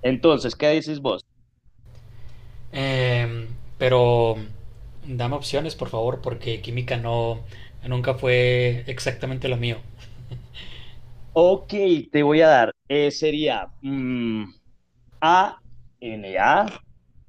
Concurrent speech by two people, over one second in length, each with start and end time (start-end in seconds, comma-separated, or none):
none